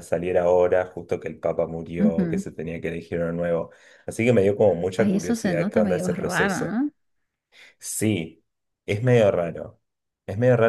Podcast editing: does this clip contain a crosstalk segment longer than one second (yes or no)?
yes